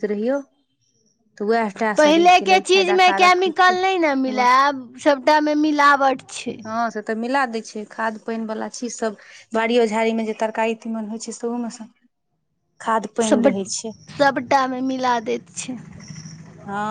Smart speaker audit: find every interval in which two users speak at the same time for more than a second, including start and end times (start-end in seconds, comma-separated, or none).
2.0-4.4